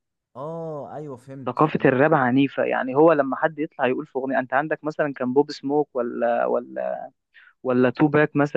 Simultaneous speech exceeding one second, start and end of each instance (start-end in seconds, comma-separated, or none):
none